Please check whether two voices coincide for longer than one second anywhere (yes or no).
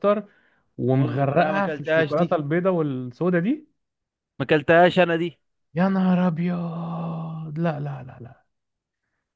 yes